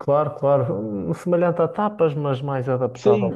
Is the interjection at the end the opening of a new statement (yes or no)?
yes